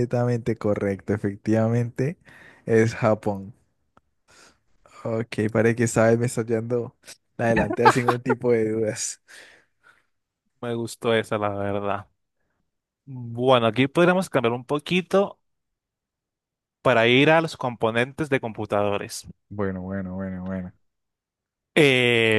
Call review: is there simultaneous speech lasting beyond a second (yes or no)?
no